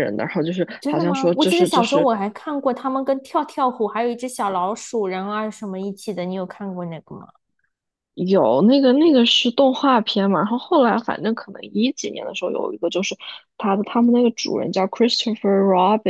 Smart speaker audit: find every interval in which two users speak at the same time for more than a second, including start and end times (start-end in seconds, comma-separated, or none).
0.8-2.1